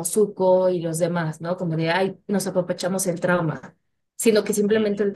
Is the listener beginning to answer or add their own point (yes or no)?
no